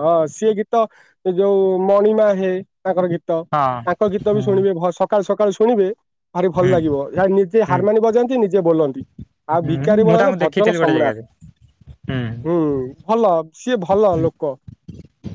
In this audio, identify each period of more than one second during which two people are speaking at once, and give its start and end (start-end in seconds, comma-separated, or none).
9.6-11.2